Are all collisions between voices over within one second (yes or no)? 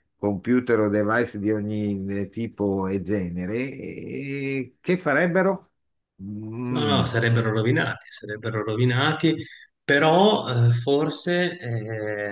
yes